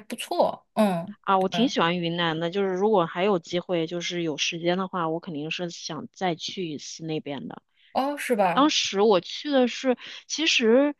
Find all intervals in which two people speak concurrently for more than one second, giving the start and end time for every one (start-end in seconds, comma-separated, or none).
none